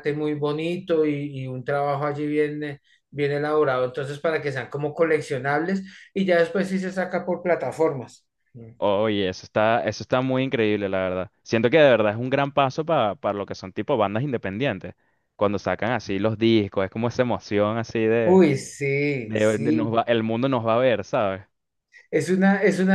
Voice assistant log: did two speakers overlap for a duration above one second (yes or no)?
no